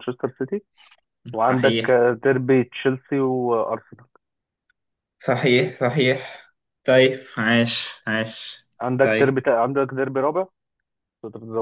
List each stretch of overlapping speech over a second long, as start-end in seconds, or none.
none